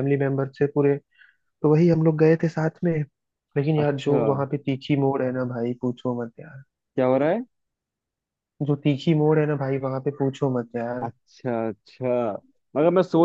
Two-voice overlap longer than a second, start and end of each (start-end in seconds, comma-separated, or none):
none